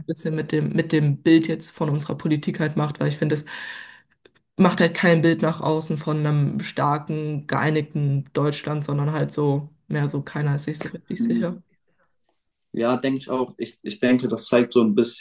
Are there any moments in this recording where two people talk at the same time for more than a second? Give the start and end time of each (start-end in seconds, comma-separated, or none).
none